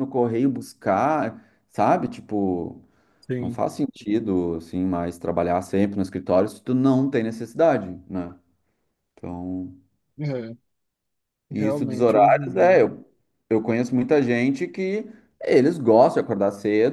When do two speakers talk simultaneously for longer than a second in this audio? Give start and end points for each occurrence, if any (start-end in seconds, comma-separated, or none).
11.5-12.8